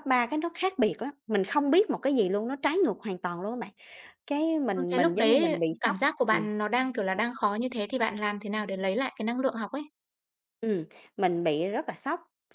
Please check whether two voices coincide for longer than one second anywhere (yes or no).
yes